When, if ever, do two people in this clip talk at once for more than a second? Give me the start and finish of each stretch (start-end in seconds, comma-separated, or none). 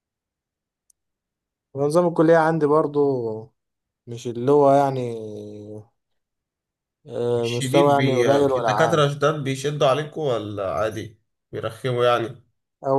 7.4-9.1